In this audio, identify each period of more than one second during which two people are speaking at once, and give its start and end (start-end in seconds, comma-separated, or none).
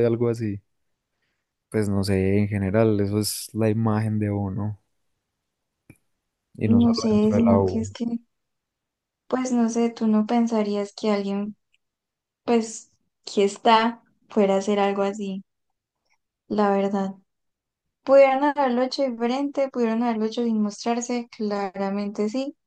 6.6-7.9